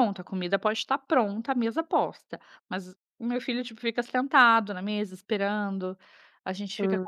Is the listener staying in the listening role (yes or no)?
yes